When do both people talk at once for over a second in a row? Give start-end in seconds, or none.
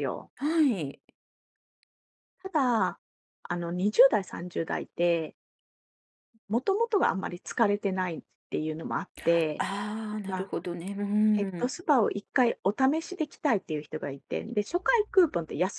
none